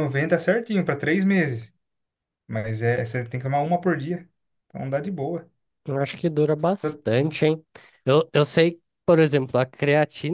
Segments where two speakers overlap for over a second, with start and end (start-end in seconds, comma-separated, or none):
none